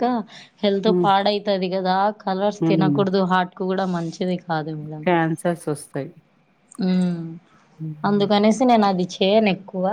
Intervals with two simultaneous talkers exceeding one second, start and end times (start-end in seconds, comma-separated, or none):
none